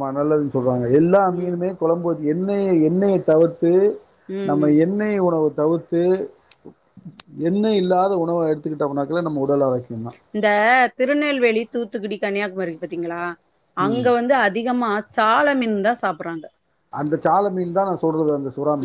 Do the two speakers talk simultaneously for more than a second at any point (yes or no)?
no